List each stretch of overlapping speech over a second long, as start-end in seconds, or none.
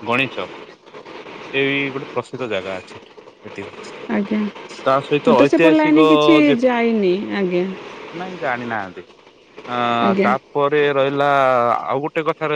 none